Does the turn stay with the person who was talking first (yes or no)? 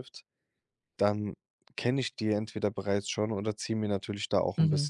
yes